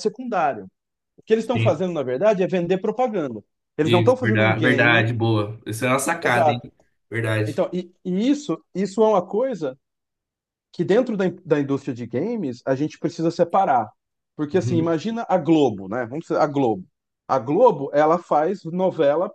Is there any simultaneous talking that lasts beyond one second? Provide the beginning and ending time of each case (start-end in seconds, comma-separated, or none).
3.8-5.1